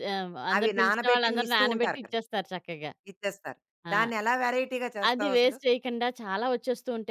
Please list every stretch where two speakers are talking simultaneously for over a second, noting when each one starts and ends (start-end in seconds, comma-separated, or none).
0.6-2.2